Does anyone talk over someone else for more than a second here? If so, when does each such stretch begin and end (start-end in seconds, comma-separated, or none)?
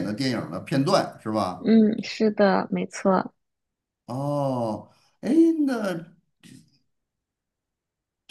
none